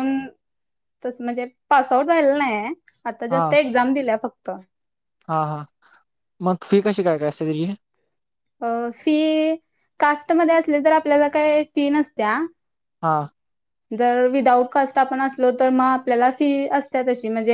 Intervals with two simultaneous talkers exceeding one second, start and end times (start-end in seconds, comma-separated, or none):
none